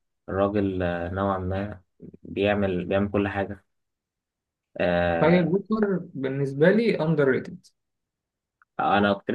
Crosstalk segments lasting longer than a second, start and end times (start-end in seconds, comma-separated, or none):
none